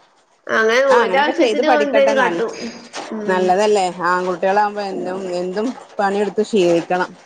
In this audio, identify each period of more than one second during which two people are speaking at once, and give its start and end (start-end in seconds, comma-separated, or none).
0.9-2.4